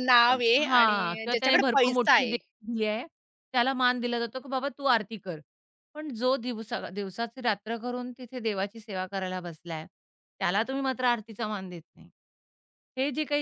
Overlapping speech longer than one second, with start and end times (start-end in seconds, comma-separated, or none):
0.7-2.4